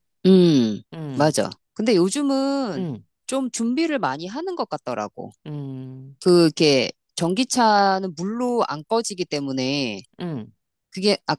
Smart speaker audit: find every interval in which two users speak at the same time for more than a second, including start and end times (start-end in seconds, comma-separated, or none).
none